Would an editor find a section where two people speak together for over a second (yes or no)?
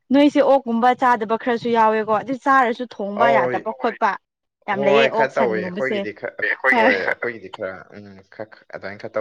yes